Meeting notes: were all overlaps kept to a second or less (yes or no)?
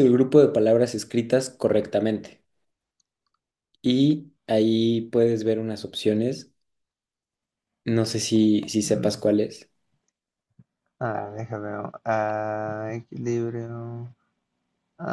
yes